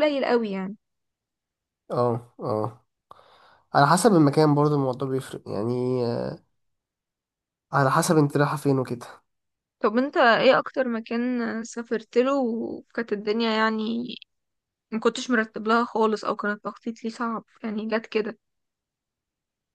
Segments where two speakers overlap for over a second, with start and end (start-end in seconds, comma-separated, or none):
none